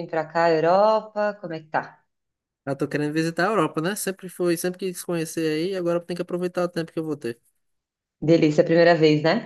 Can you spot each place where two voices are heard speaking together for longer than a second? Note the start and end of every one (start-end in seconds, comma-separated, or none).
none